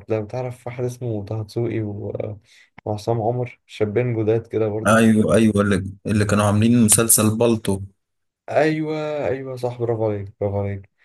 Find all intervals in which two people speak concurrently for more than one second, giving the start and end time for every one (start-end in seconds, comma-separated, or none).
none